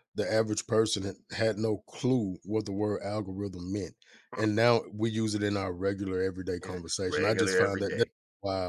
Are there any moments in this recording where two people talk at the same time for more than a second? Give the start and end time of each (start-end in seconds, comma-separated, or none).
6.6-8.1